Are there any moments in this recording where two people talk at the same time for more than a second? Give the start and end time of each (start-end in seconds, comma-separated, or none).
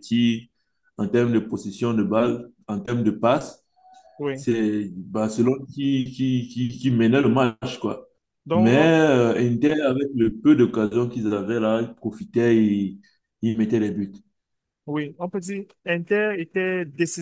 none